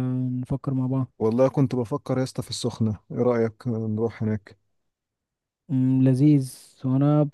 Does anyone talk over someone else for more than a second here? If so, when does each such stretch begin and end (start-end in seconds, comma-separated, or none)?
none